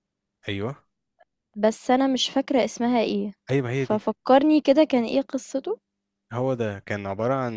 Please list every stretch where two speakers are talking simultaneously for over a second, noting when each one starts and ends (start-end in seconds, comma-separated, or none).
none